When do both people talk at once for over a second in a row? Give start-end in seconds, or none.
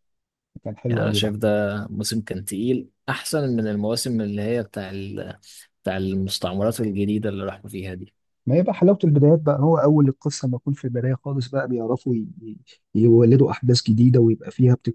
none